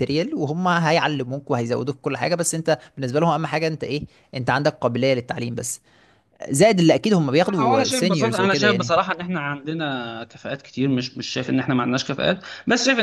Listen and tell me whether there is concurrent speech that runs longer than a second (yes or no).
yes